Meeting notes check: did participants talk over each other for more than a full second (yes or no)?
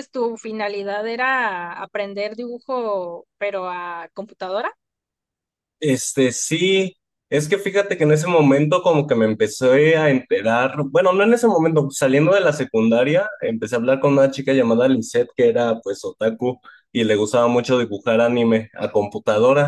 no